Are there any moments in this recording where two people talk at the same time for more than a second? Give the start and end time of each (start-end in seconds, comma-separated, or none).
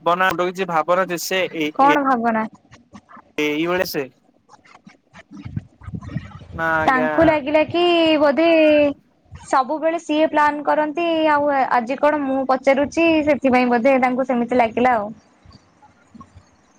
none